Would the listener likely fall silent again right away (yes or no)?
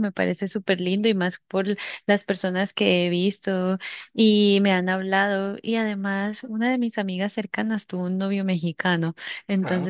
yes